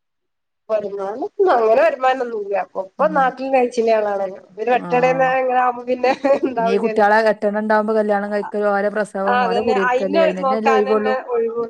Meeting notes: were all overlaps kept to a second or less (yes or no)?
no